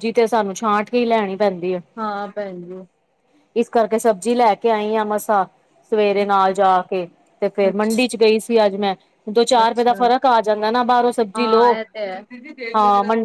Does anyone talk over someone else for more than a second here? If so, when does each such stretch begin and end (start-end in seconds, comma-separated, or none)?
none